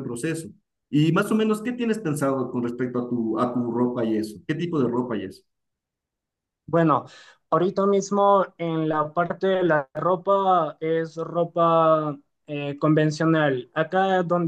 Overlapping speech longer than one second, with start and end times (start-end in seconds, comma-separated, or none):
none